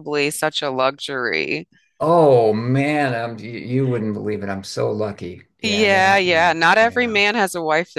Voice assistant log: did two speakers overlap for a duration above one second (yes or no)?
yes